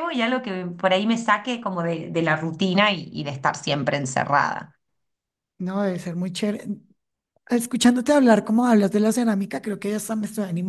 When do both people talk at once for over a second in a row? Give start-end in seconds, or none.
none